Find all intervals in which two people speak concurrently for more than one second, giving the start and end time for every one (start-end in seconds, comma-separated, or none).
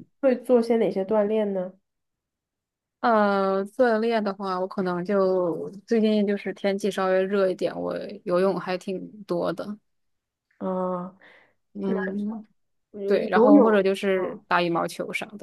13.1-14.4